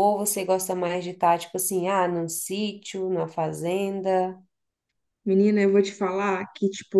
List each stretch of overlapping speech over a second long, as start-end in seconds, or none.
none